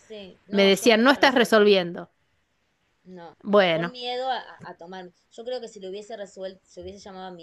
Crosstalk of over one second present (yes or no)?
yes